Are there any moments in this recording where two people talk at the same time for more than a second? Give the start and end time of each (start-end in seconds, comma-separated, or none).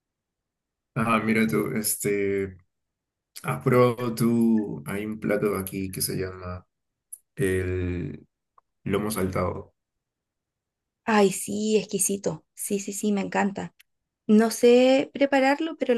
none